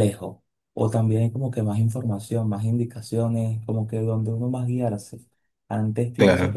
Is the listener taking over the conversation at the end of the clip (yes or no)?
no